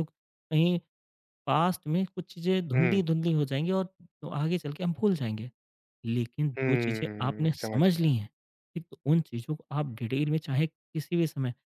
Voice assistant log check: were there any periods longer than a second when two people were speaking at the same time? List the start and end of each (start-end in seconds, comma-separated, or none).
6.6-8.1